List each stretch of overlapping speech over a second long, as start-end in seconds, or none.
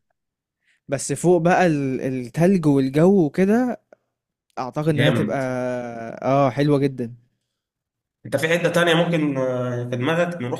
none